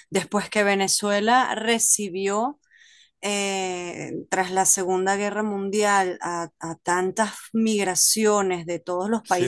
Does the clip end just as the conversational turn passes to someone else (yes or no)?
no